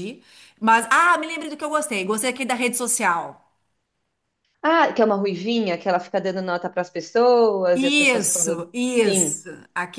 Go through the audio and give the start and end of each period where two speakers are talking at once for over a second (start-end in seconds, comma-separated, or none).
7.7-9.4